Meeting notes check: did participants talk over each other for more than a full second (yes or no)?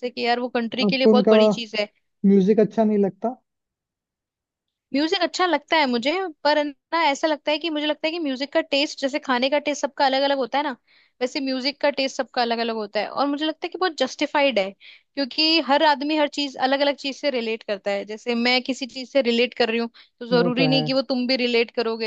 no